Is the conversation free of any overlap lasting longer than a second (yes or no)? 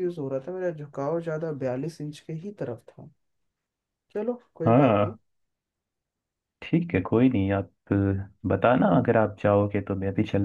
yes